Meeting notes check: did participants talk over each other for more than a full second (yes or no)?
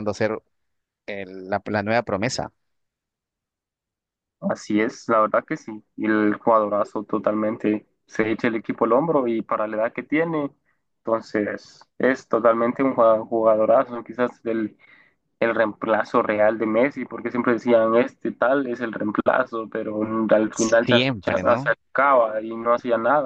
yes